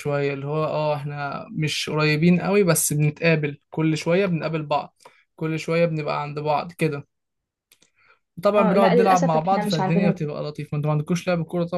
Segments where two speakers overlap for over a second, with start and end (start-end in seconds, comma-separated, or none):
8.6-10.3